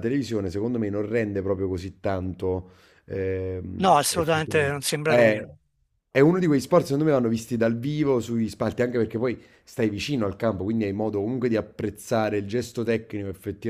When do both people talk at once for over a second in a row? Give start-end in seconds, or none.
3.8-5.5